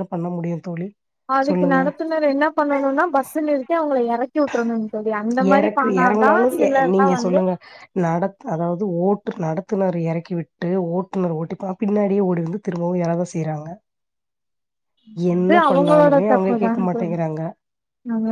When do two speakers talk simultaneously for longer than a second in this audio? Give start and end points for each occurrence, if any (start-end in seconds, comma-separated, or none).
15.4-17.1